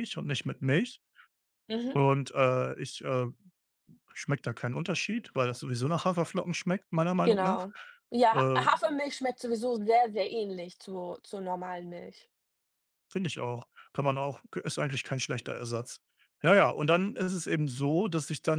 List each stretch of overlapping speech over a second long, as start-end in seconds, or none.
none